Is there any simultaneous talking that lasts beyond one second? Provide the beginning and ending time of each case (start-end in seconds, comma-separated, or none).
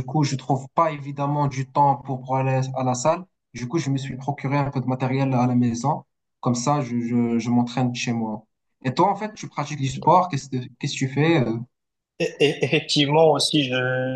none